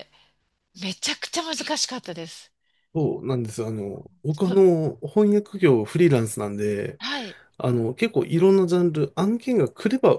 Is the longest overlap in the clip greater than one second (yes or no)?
no